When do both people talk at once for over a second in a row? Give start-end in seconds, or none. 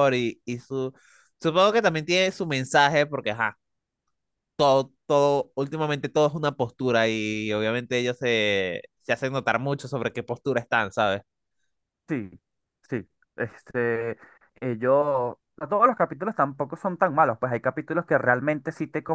none